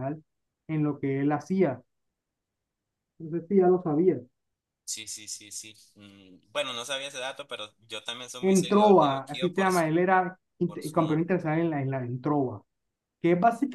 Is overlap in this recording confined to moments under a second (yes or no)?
no